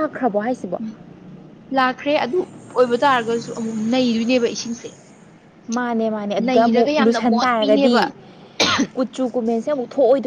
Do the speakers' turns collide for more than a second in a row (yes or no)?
yes